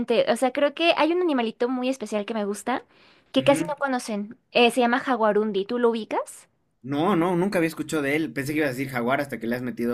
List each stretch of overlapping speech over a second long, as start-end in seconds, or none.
none